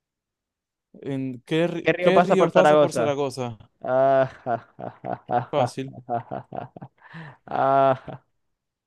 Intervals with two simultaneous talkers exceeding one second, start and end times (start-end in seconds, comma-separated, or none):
1.8-3.1